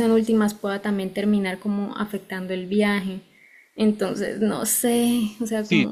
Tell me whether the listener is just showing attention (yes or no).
no